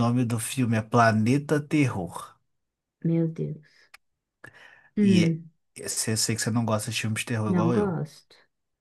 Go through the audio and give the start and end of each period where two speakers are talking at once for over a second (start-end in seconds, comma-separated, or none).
none